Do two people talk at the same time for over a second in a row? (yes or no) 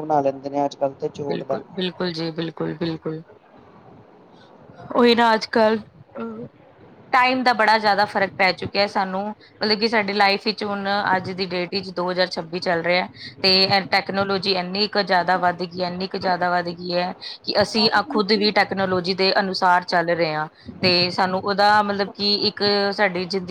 no